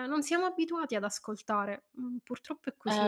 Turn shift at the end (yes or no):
yes